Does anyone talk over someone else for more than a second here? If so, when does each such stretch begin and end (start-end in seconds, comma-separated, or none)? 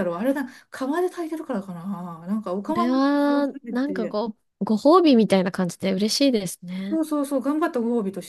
2.7-4.2